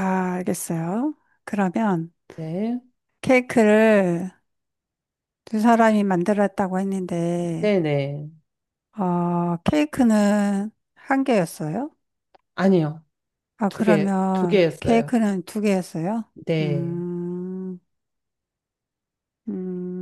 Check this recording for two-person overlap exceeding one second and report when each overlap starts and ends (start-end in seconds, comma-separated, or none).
13.7-15.1